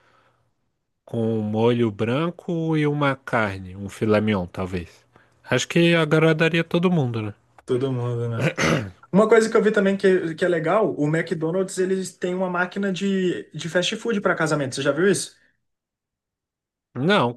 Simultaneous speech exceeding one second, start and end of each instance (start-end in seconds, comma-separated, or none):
none